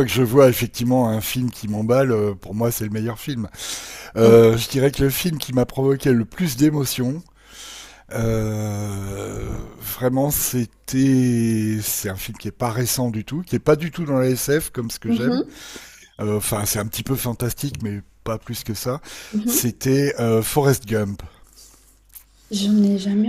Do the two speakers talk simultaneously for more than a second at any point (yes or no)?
no